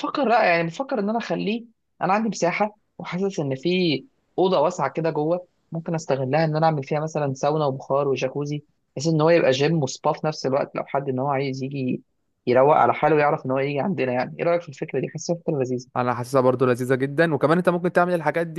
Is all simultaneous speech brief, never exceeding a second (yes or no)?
yes